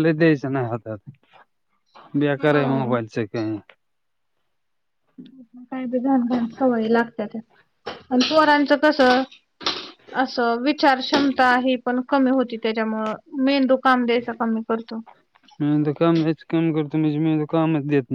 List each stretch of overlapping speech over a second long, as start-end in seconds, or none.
none